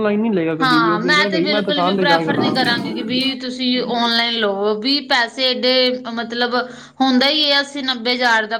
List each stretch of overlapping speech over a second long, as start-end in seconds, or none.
0.6-2.5